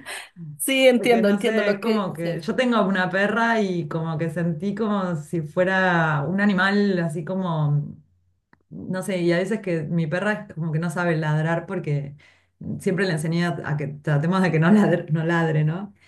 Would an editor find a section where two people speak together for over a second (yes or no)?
yes